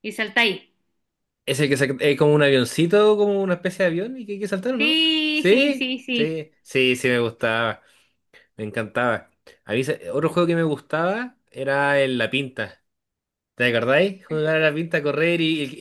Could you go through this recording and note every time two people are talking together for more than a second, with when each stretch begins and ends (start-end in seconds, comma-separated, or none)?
4.8-6.4